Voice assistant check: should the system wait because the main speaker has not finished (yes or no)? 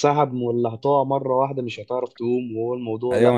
no